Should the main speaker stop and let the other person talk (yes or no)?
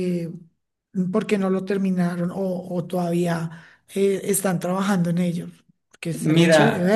yes